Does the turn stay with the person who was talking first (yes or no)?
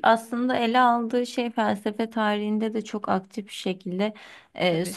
yes